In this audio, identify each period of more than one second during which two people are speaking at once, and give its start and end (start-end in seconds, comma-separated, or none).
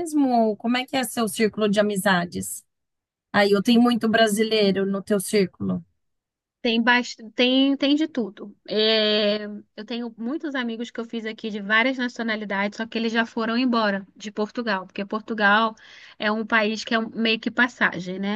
none